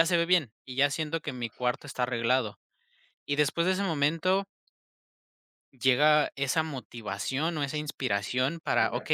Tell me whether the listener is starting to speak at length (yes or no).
no